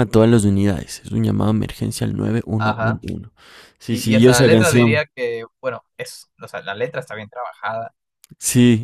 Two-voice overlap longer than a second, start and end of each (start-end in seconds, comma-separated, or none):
3.9-5.1